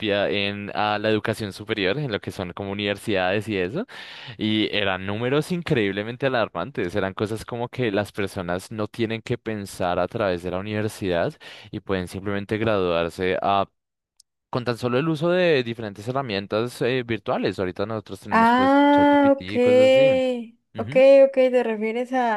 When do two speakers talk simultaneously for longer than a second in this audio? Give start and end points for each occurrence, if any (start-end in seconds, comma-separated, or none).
18.3-19.5